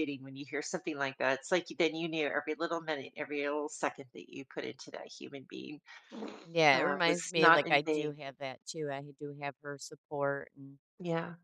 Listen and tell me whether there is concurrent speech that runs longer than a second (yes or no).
yes